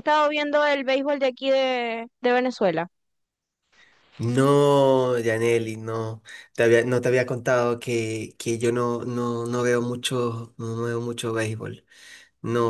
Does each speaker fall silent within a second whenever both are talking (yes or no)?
yes